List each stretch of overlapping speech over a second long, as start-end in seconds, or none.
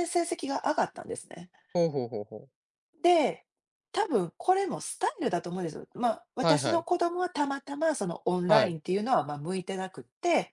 none